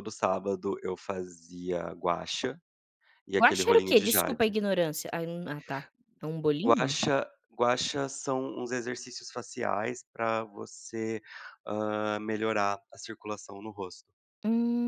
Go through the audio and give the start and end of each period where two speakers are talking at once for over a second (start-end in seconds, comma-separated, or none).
3.4-4.6